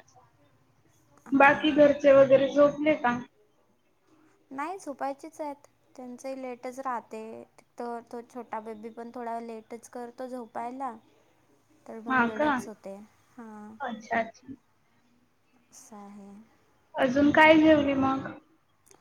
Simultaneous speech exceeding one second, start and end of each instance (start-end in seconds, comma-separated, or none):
none